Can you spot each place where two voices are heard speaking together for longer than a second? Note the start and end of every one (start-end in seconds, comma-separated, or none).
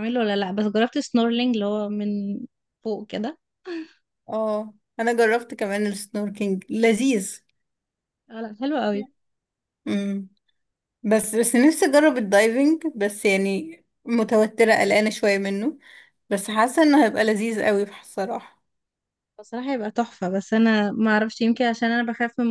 none